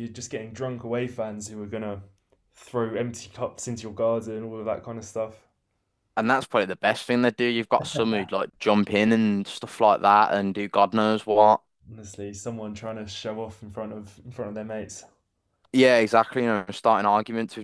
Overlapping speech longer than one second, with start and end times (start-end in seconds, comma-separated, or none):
none